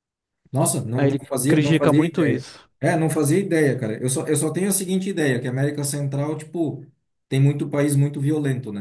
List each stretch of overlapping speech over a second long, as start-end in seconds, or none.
1.0-2.7